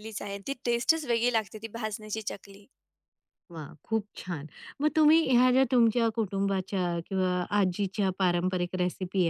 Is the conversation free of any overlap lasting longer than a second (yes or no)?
yes